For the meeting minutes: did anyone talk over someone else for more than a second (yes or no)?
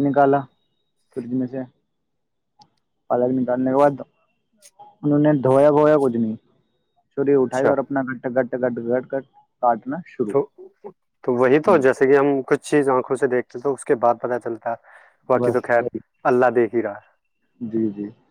no